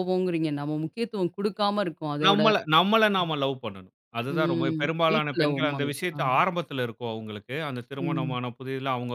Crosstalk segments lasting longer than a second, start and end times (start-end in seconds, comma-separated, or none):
4.3-6.2